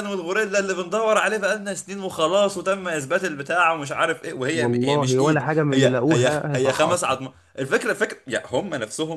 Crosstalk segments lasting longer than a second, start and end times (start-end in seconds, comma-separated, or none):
4.6-7.2